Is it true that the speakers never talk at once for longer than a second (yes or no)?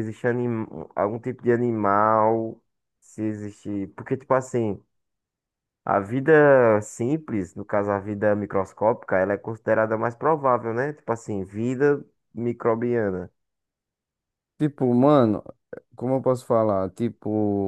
yes